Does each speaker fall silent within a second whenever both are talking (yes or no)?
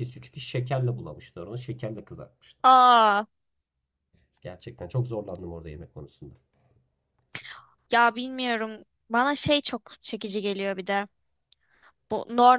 yes